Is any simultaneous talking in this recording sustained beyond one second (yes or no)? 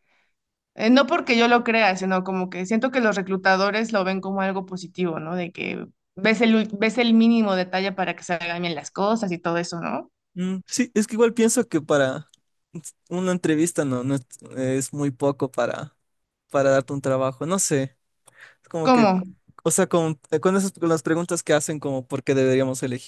no